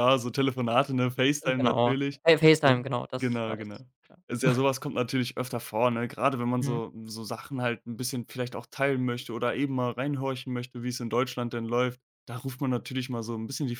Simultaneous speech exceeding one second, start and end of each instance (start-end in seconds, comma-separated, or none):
1.6-3.8